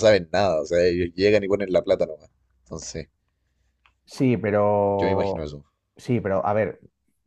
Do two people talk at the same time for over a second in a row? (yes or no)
no